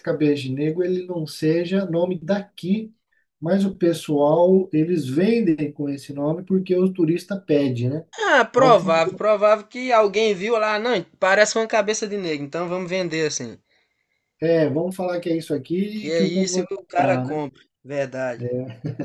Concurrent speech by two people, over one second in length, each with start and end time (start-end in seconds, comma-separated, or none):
15.9-17.4